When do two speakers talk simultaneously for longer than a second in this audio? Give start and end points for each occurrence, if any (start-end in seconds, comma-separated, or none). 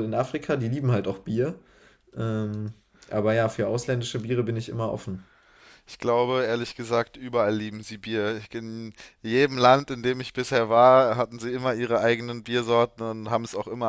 none